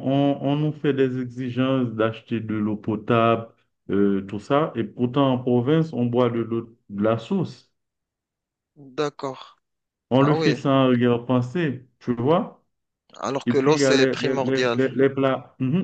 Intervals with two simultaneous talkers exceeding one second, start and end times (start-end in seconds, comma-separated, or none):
13.4-14.8